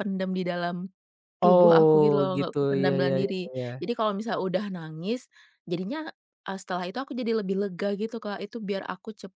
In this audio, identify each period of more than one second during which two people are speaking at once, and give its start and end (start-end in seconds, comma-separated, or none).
1.5-3.7